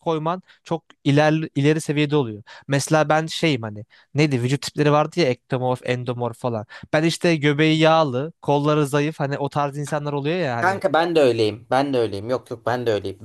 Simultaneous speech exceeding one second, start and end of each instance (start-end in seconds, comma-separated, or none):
none